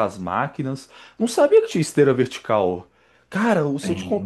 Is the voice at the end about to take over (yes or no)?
no